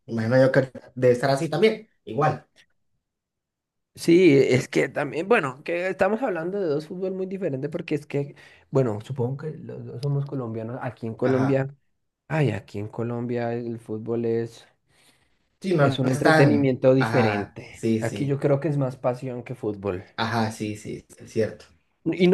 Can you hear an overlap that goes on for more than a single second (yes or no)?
yes